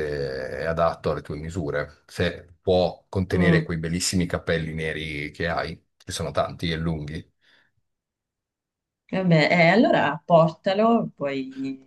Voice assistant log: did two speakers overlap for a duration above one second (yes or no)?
no